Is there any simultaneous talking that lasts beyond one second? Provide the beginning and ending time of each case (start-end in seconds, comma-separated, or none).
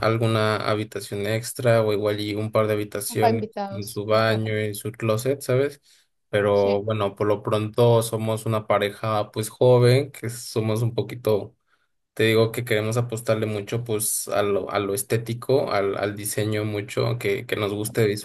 3.1-4.4